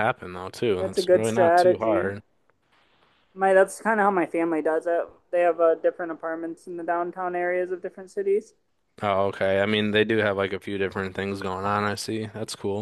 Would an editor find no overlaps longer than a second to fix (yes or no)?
no